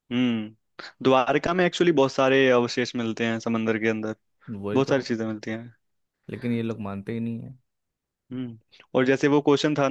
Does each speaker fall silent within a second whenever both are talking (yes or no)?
yes